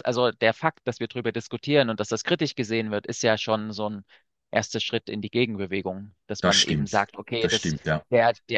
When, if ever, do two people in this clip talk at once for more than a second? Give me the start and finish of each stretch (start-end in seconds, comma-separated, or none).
6.4-7.7